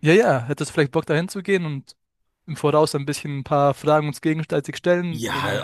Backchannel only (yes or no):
no